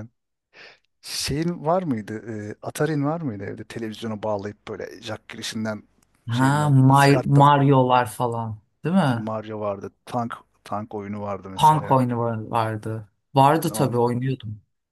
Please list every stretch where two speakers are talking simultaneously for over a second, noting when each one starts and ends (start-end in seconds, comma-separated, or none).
6.3-7.5